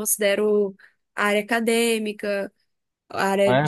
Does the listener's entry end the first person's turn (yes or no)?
no